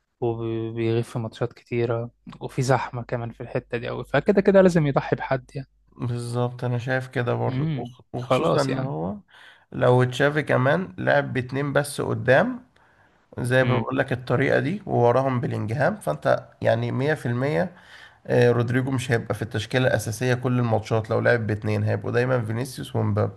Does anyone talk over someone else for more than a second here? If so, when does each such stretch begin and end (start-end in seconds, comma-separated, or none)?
7.5-8.9